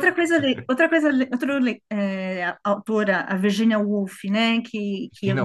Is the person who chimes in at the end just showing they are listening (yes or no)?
yes